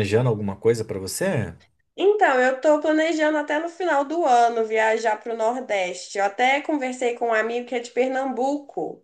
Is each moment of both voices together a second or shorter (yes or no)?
yes